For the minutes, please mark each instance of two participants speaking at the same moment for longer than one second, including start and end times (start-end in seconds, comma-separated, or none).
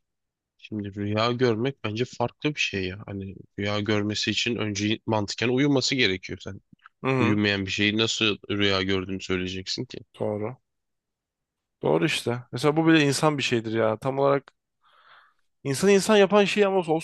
none